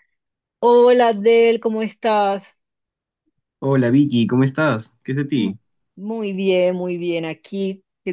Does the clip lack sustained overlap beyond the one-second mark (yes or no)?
yes